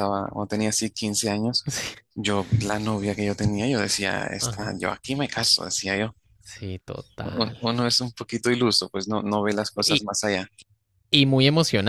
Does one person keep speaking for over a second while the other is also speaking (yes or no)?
no